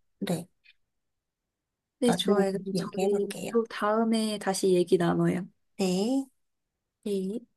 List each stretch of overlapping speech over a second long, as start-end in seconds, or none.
2.0-3.6